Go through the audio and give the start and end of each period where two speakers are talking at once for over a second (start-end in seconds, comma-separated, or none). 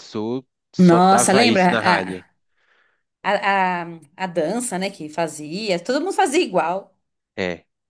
0.8-2.2